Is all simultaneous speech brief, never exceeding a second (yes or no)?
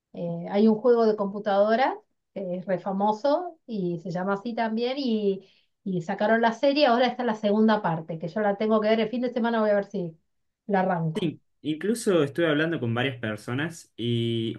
yes